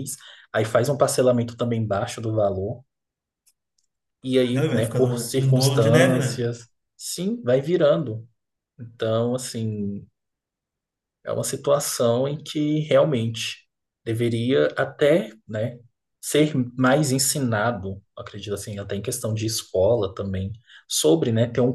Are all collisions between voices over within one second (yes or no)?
no